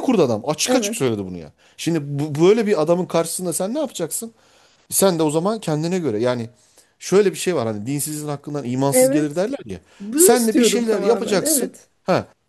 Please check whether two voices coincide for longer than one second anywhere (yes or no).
yes